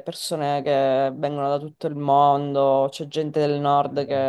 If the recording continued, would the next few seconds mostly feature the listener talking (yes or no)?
no